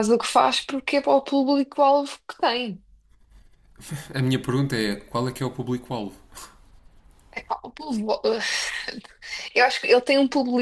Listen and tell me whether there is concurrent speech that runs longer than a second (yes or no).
no